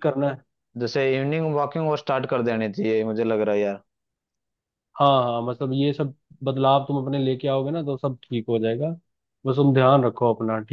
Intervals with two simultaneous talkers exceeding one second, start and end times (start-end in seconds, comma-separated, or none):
none